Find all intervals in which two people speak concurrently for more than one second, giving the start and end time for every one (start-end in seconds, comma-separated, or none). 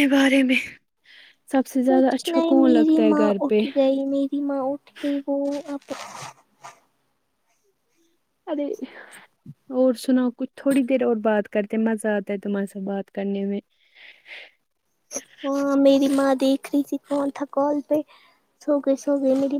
1.9-3.6